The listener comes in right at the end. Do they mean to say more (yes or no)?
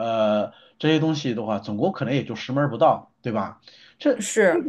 no